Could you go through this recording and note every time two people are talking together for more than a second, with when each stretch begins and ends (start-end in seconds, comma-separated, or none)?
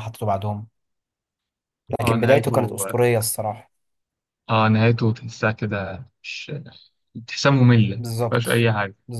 none